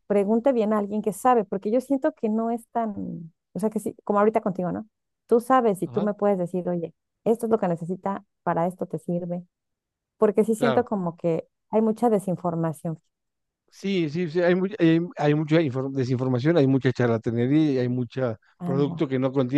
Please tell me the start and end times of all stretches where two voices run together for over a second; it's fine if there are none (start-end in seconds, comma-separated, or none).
none